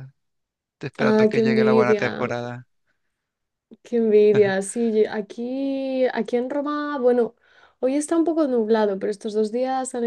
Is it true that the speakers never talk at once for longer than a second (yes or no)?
no